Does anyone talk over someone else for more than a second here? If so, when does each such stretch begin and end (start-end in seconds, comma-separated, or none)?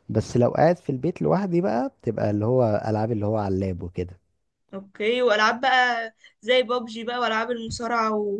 none